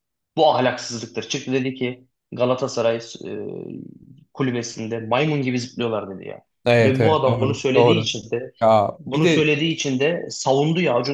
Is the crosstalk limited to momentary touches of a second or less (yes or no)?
no